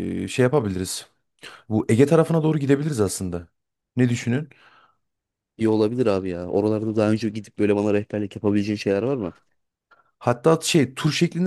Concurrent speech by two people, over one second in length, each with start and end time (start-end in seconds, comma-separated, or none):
none